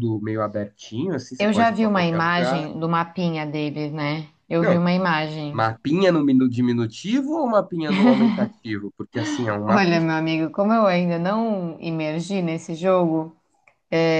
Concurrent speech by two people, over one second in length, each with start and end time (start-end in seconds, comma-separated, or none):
1.4-2.7